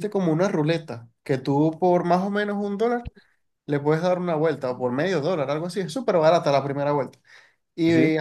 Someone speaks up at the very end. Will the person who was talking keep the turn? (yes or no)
yes